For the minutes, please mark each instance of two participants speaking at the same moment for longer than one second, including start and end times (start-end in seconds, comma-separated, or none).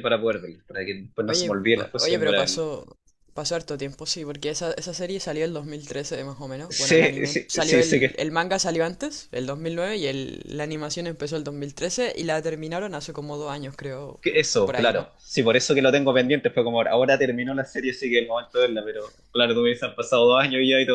1.2-2.7, 6.7-8.2